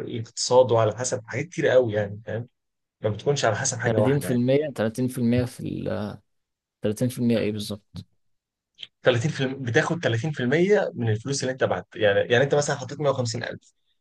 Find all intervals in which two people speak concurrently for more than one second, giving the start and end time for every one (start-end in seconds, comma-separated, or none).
none